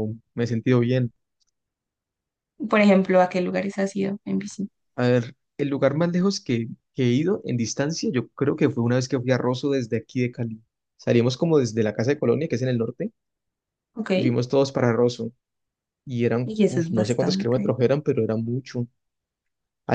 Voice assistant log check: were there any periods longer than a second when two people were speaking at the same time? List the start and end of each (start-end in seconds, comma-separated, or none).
16.4-17.7